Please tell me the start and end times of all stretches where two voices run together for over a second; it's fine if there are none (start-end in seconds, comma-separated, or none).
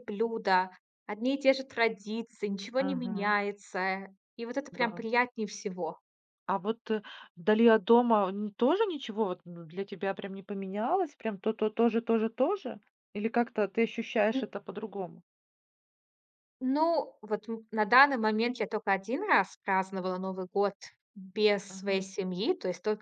none